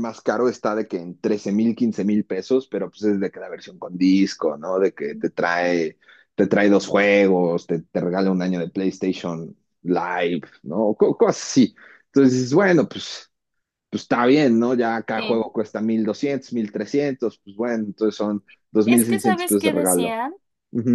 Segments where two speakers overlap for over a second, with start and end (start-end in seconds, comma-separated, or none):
18.9-20.2